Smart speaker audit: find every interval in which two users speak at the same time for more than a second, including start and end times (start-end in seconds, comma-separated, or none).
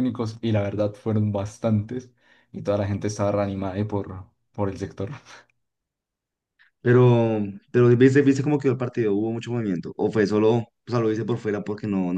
none